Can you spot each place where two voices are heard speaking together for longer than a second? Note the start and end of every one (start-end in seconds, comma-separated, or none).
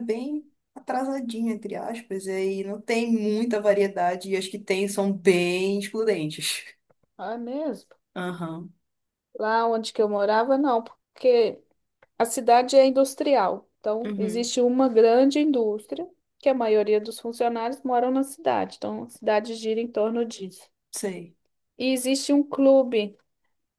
none